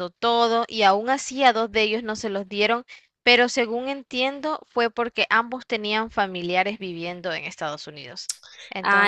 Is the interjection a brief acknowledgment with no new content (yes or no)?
no